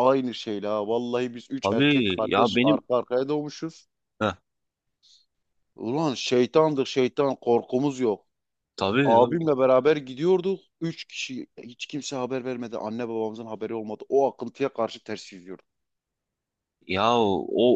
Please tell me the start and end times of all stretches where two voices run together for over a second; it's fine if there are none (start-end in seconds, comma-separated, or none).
1.6-2.8